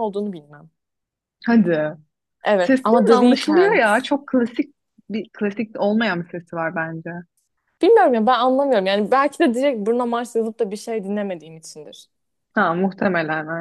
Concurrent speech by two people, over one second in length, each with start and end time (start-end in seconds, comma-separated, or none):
2.6-3.8